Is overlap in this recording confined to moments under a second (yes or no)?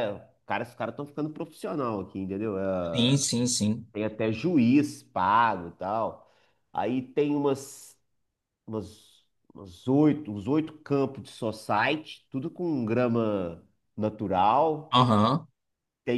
yes